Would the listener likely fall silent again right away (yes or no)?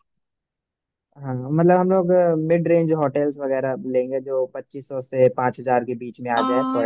no